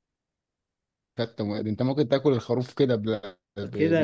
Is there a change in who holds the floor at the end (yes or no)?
yes